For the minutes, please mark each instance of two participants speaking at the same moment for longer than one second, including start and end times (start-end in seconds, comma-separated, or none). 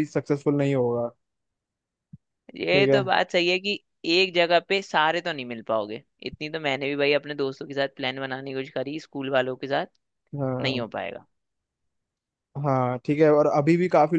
none